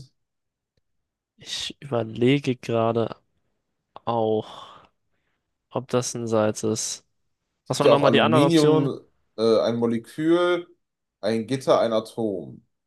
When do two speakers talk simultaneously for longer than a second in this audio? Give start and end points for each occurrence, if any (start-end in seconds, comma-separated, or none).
7.7-8.9